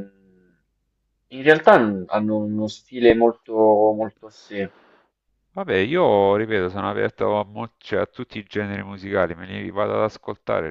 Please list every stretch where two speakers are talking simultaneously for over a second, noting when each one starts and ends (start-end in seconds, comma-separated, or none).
none